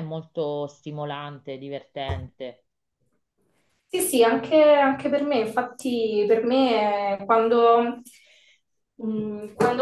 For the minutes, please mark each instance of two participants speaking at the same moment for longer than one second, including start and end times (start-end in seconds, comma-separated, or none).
none